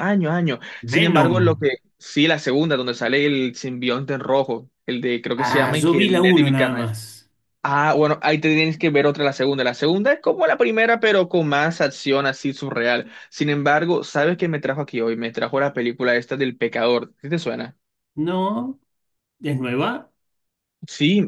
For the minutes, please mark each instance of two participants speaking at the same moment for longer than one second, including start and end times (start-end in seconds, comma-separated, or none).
5.5-7.0